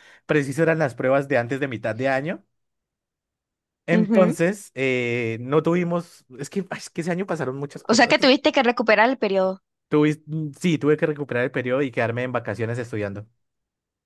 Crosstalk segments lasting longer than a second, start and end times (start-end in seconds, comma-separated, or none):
none